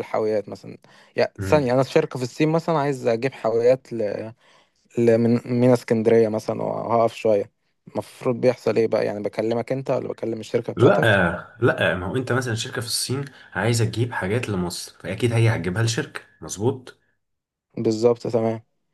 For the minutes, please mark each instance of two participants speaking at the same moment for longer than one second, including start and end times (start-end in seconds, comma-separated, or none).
none